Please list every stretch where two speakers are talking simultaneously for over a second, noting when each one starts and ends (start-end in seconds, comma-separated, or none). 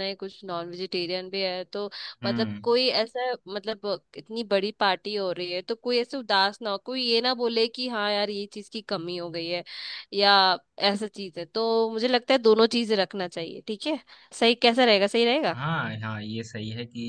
none